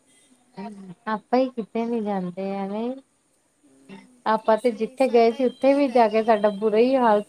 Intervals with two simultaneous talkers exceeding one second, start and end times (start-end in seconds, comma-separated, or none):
4.5-6.0